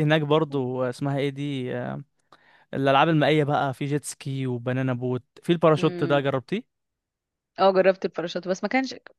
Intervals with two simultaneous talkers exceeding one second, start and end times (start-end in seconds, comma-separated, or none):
none